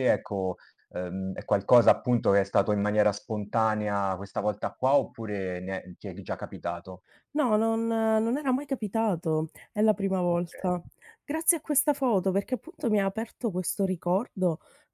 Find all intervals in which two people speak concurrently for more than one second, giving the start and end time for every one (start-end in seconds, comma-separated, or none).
none